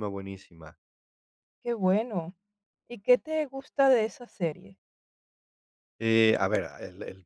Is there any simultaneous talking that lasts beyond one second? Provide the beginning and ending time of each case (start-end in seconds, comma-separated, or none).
none